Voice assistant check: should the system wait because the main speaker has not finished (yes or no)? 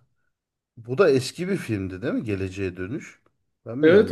no